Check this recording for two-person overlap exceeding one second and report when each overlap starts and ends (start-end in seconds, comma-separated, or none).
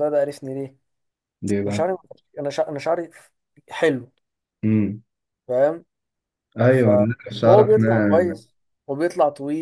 6.7-8.4